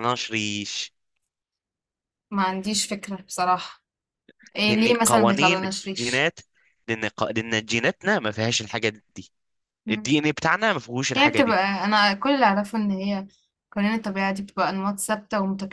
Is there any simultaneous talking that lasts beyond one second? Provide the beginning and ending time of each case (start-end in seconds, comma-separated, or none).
4.6-6.3